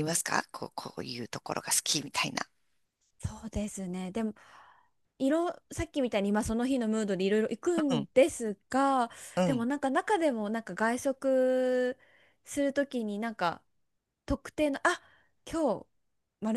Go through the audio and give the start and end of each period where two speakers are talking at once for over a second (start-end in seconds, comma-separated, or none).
none